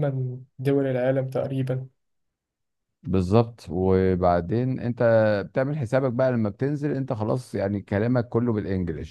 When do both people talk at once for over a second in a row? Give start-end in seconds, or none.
none